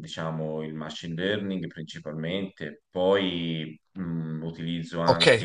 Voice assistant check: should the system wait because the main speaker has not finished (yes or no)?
no